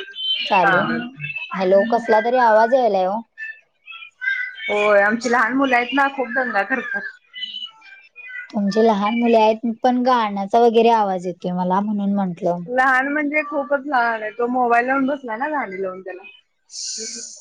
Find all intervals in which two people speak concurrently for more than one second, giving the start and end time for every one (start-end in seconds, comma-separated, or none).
none